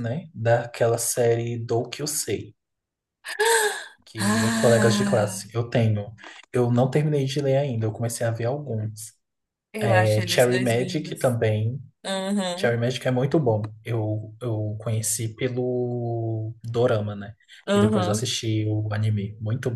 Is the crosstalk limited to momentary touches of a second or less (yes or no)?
no